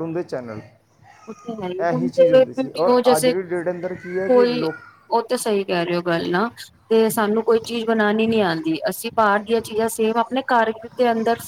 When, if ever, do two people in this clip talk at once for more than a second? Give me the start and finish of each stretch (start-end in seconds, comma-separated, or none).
1.9-3.3